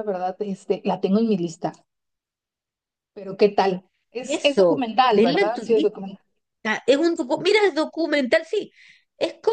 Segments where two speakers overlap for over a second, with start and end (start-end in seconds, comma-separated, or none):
4.2-5.9